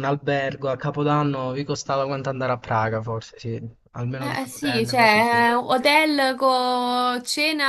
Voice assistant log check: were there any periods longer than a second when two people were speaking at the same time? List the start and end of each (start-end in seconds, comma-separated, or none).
4.2-5.4